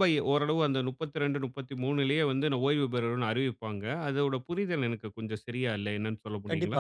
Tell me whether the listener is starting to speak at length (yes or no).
yes